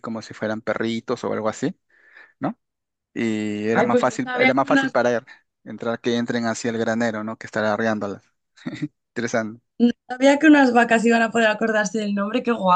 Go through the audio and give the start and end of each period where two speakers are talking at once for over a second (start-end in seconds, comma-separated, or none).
3.7-4.9